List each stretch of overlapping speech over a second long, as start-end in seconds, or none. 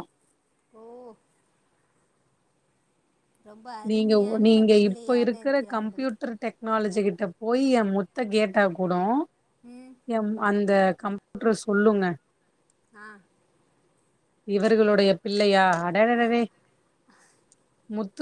3.9-6.1